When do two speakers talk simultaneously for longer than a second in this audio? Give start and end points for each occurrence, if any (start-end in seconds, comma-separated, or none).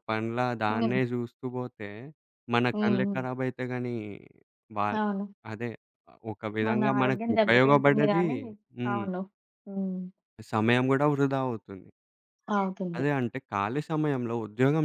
6.7-8.2